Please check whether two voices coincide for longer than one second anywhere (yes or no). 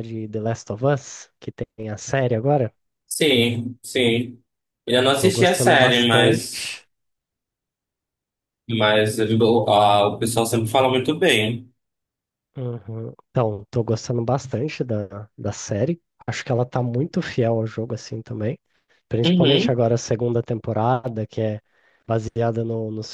yes